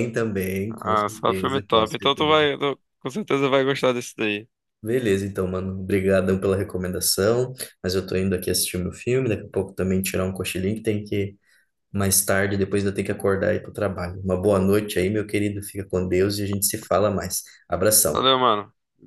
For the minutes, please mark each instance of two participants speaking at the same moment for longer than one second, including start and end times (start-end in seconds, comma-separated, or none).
0.7-2.4